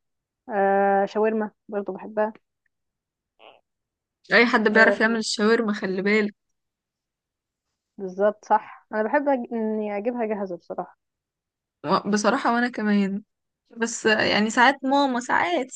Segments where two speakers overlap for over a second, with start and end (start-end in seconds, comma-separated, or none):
none